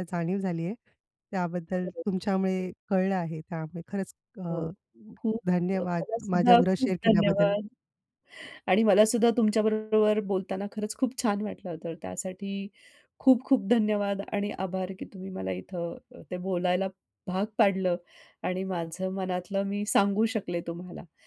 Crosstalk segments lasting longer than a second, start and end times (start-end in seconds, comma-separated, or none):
5.8-7.5